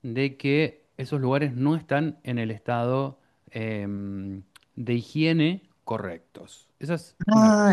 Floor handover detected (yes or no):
yes